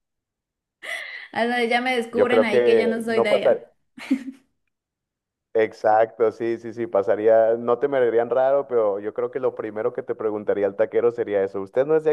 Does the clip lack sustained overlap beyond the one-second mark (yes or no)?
no